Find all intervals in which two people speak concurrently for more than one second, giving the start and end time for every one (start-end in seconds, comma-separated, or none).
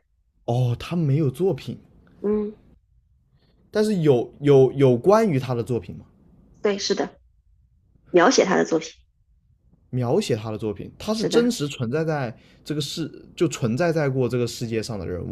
none